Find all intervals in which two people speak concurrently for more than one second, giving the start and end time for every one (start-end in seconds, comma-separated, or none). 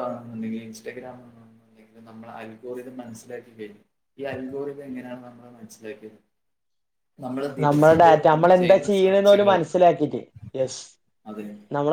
7.7-9.6